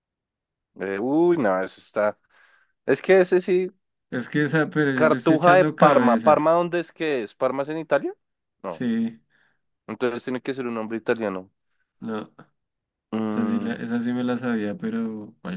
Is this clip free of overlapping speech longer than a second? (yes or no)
no